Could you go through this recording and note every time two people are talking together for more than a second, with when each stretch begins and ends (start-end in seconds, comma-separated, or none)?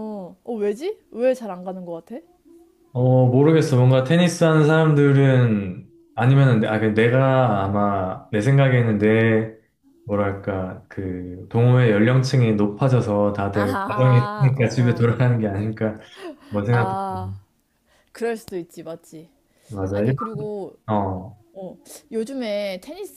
13.5-15.1